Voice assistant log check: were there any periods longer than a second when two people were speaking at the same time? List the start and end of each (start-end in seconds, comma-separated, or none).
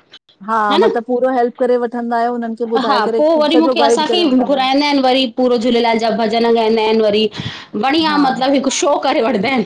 2.9-4.8